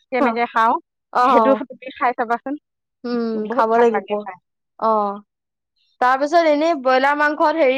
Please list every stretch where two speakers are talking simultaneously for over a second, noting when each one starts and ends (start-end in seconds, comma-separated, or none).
none